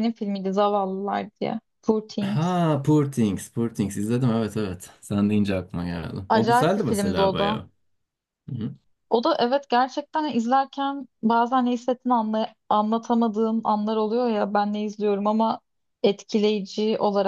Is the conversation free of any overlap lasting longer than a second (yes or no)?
no